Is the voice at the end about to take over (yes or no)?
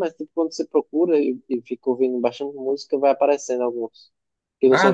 yes